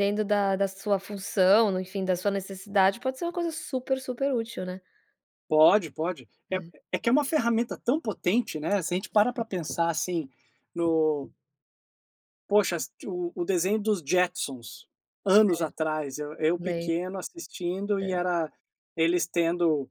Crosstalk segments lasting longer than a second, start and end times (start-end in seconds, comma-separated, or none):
none